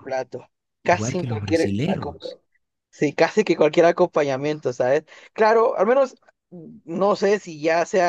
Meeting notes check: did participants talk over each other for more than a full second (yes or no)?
yes